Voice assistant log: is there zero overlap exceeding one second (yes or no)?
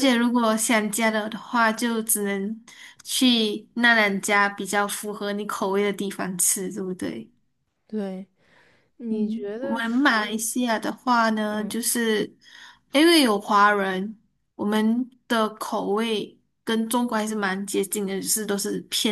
no